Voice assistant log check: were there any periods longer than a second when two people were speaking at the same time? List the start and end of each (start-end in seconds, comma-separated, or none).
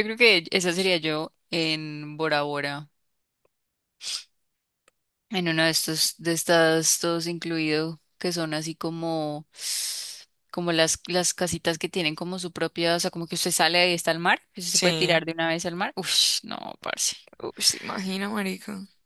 none